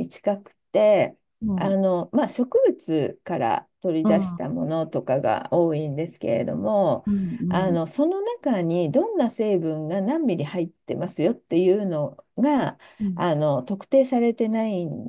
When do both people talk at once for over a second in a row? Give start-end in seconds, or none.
none